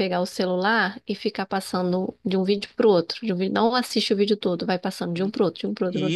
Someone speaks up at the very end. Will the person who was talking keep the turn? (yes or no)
no